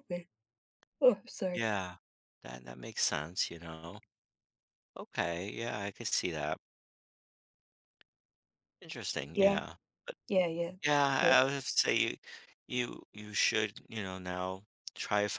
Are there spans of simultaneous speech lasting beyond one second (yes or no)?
no